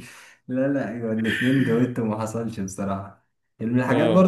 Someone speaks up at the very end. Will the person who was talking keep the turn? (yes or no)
yes